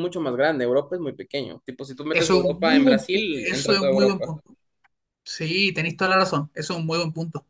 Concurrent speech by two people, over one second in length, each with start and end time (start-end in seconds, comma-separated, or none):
2.1-4.3